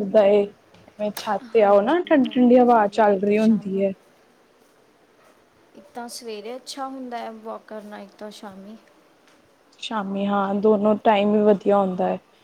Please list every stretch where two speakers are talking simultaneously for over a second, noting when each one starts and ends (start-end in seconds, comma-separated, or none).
1.6-3.8